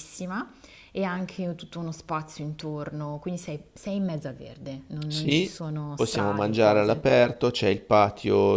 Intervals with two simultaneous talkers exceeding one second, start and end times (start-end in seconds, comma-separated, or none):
5.1-7.2